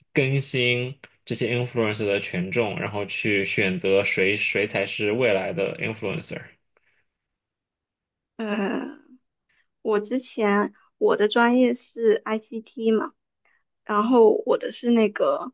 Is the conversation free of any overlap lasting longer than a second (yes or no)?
yes